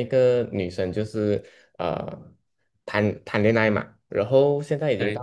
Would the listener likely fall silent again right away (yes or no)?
yes